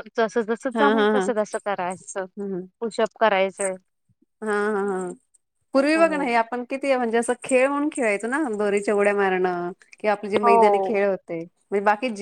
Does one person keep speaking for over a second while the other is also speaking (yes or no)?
no